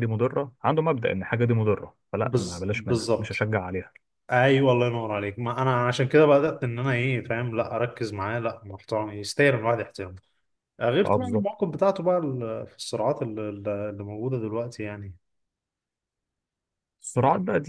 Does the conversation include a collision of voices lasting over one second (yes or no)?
yes